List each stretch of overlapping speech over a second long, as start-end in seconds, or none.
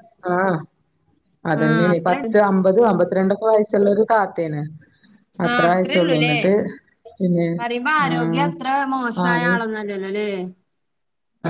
none